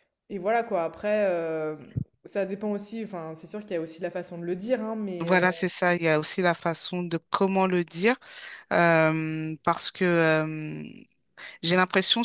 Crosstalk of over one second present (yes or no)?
no